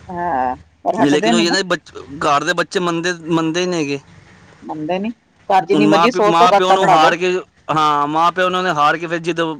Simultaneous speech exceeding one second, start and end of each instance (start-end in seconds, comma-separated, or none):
5.7-7.1